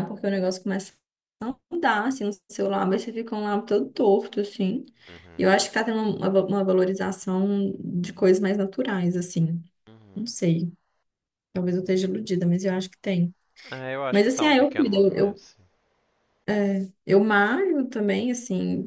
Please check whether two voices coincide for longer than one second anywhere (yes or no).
yes